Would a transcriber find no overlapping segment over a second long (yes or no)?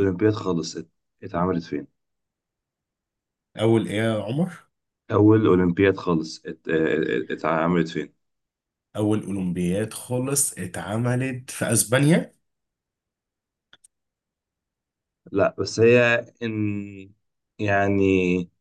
yes